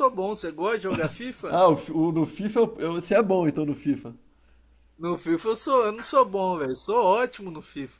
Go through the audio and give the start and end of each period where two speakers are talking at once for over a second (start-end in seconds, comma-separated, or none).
none